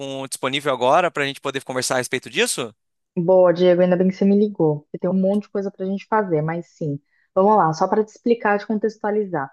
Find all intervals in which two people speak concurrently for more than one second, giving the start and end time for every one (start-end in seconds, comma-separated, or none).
none